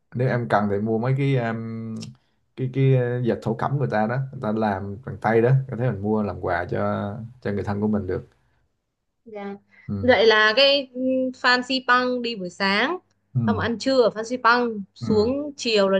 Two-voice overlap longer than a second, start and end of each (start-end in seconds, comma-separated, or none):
none